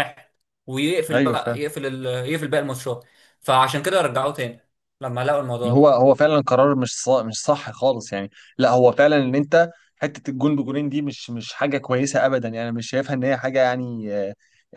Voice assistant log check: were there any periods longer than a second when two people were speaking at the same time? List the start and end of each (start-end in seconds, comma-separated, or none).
none